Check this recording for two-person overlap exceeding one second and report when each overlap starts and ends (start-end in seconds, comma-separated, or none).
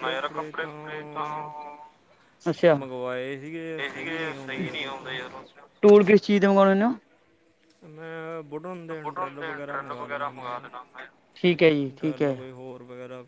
none